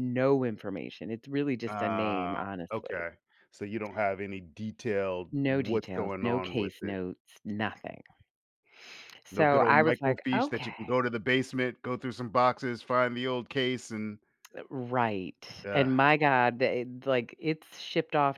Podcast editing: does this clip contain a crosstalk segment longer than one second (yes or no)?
yes